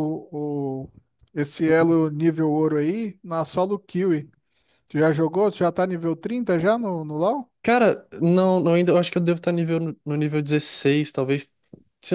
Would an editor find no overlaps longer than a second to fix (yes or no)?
yes